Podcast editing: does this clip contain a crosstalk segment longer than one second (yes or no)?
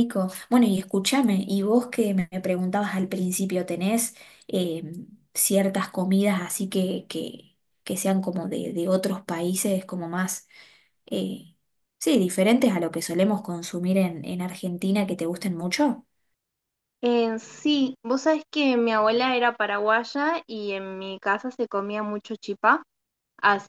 no